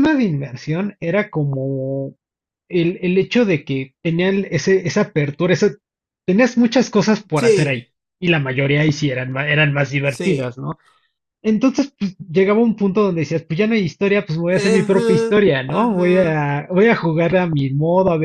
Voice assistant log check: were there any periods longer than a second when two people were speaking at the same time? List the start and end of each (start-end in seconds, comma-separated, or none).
14.5-16.4